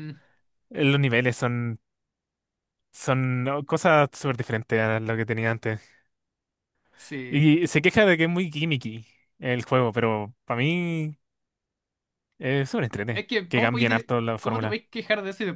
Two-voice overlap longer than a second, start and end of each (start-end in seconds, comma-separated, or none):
13.1-14.8